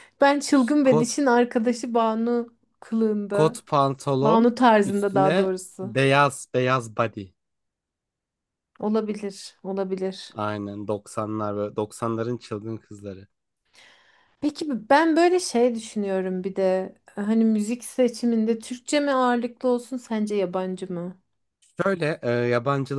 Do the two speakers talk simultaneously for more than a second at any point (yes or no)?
yes